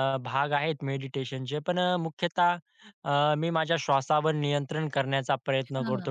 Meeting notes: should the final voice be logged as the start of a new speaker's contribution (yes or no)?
no